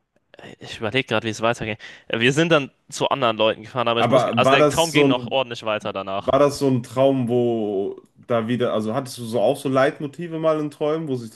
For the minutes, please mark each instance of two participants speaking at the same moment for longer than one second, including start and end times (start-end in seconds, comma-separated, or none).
4.0-5.4